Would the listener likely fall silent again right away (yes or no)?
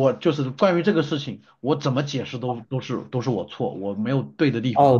no